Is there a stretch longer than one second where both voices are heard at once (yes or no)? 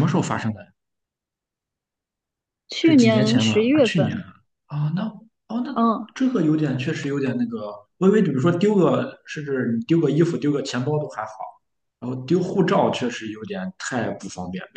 yes